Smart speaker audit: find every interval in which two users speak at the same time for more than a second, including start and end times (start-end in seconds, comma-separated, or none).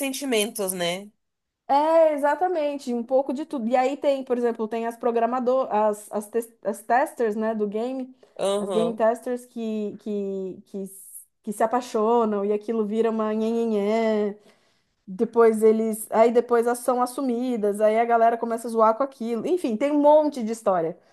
none